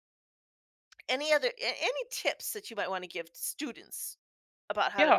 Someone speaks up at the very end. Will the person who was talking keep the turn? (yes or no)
no